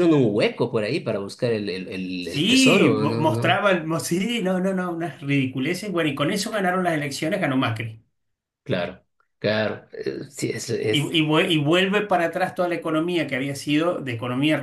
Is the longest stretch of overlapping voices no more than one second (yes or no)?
no